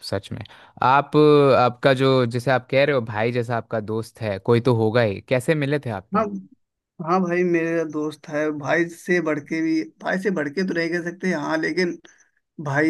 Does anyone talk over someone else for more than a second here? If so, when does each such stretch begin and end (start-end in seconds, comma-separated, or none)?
none